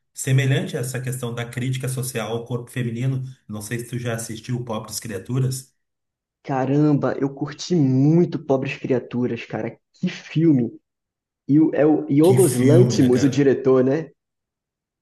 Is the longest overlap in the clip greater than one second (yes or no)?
yes